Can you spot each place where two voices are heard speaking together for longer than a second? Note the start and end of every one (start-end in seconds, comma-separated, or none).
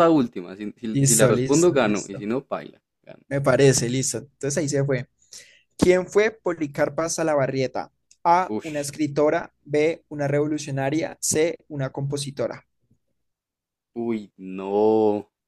0.9-2.2